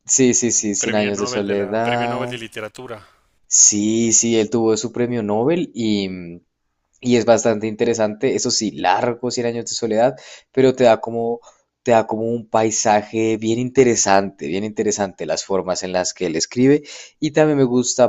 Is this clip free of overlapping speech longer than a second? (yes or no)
no